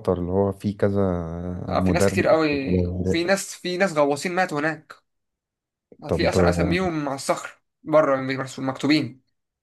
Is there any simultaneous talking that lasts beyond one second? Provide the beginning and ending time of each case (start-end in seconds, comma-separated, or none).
1.7-3.4